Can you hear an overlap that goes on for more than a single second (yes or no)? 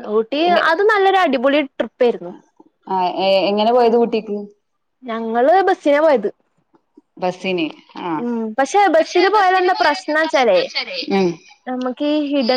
yes